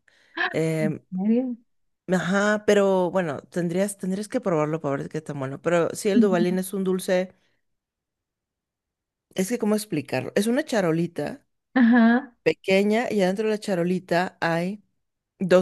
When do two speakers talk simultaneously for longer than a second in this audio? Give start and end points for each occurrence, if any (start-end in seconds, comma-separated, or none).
none